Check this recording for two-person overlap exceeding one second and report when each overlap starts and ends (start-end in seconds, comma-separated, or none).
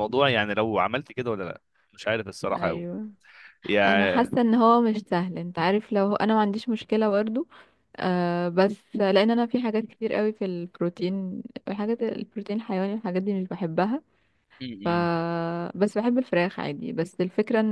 none